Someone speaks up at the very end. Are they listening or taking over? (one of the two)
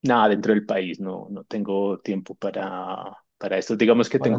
listening